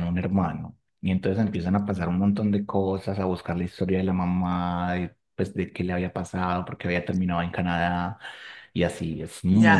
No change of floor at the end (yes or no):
no